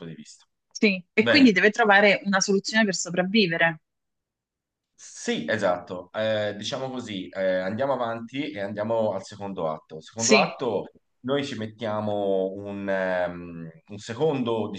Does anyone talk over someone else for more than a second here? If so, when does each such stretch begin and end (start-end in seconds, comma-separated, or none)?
none